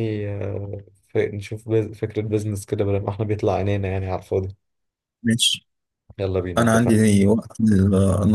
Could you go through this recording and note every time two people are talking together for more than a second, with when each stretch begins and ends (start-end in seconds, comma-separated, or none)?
none